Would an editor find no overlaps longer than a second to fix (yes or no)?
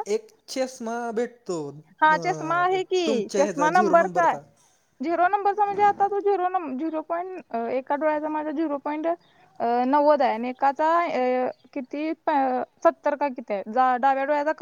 no